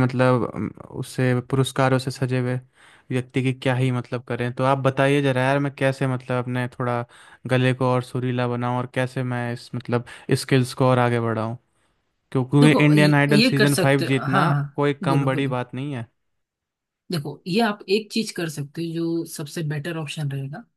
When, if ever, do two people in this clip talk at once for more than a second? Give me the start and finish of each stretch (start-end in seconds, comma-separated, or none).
12.6-15.5